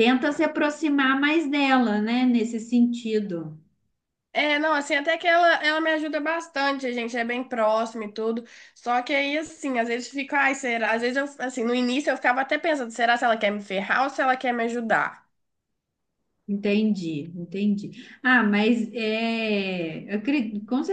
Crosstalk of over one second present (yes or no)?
no